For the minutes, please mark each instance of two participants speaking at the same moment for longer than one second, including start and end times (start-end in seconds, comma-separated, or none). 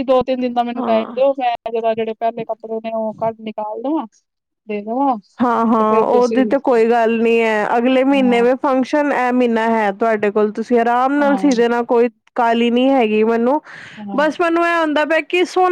none